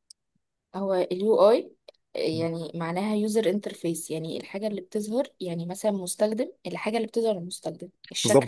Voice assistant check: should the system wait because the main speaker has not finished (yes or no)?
no